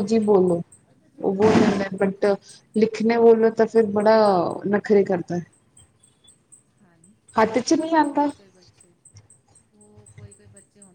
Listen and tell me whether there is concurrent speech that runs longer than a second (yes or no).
no